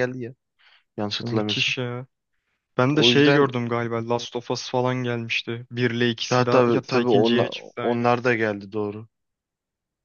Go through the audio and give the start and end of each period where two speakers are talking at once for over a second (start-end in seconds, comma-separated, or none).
6.3-8.1